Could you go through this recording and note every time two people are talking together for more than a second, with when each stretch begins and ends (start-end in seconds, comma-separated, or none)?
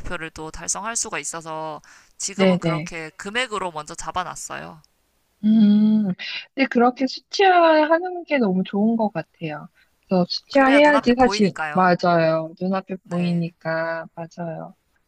10.5-11.9